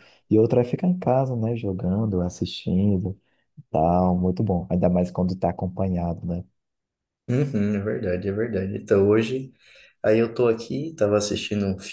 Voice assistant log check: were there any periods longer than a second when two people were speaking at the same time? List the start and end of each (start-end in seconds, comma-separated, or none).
none